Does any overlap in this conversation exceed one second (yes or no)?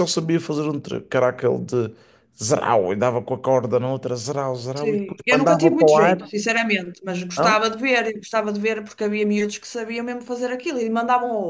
yes